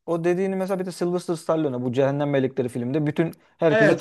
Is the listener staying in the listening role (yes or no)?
yes